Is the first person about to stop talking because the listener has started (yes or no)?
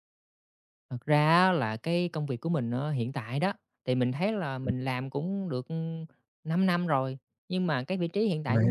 no